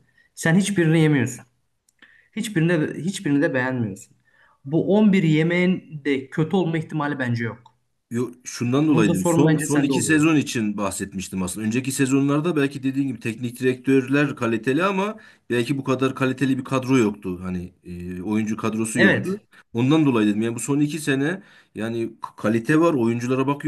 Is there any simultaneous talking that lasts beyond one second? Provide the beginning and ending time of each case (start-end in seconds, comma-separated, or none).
8.9-10.3